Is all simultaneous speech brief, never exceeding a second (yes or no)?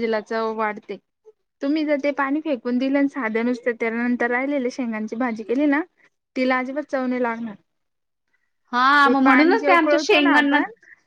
no